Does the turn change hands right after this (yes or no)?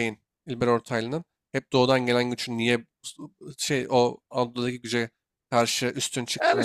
yes